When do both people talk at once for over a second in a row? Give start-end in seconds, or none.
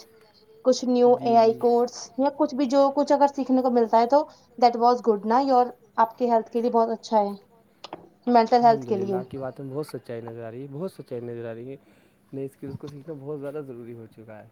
none